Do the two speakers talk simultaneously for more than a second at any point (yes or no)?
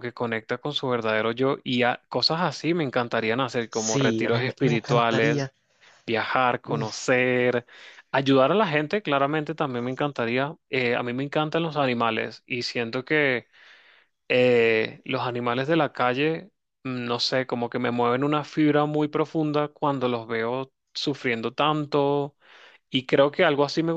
yes